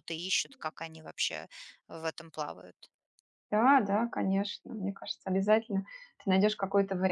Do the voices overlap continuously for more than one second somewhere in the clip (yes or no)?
no